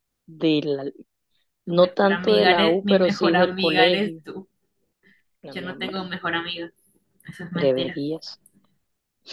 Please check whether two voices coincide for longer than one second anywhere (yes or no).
yes